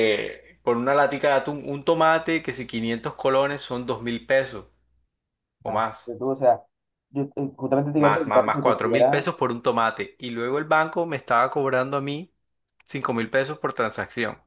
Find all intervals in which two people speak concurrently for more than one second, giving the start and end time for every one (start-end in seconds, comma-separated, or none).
8.0-9.3